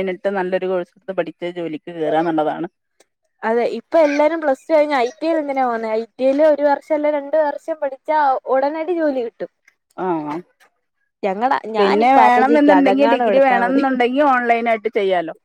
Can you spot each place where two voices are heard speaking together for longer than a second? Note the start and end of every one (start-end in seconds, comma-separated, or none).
11.8-13.7